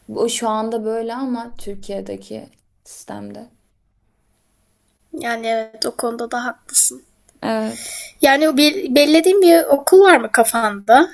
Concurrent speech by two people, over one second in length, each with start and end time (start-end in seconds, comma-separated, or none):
none